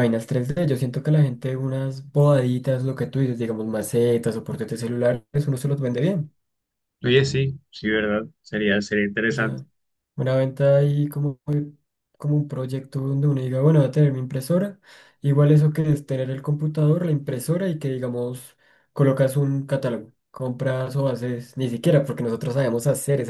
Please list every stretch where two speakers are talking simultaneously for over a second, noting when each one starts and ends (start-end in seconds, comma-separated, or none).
none